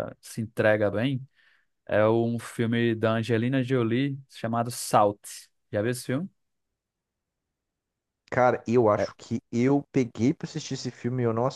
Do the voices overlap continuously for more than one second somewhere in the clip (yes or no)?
no